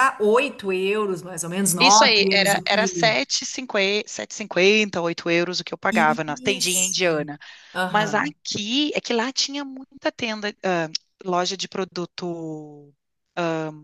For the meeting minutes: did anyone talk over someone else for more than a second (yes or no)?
yes